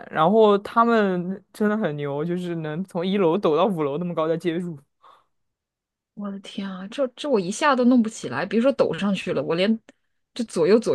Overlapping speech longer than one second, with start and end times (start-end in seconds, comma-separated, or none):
none